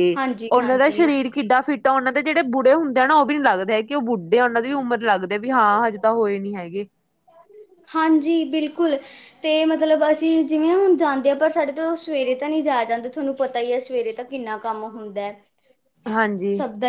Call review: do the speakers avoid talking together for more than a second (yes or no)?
yes